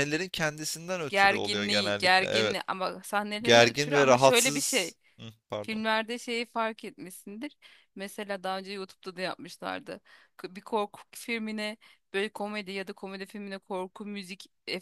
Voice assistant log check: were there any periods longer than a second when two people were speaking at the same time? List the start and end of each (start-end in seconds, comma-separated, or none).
1.1-2.6, 3.4-4.9